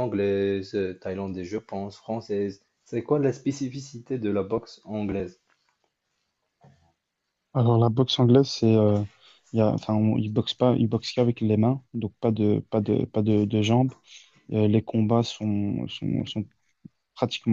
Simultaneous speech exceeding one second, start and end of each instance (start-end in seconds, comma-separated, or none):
none